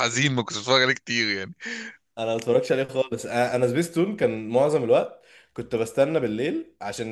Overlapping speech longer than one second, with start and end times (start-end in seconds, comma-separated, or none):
none